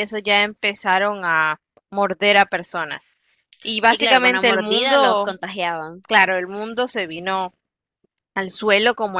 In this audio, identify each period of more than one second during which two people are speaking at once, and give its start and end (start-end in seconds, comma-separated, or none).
3.9-5.4